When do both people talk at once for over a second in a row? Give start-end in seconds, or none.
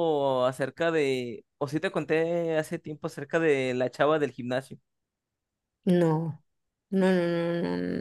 none